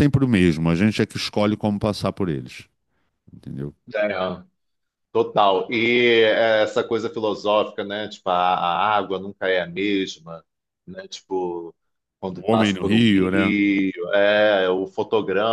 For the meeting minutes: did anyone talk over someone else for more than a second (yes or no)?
yes